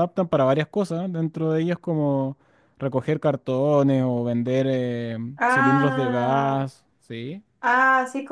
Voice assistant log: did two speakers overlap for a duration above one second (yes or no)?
yes